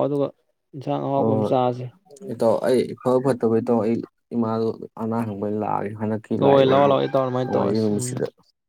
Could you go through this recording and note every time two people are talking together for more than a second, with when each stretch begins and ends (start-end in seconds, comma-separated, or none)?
6.4-8.1